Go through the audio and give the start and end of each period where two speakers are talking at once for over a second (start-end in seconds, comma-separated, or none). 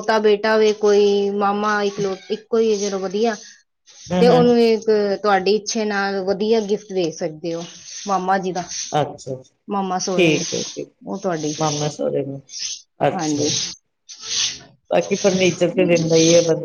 none